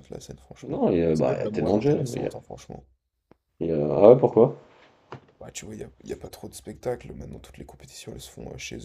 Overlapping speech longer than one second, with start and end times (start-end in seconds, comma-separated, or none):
0.6-2.3